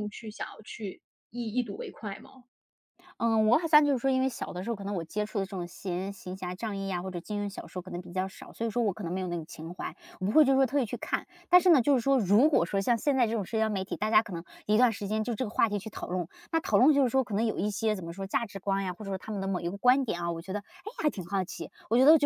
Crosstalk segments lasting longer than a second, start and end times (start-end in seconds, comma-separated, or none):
none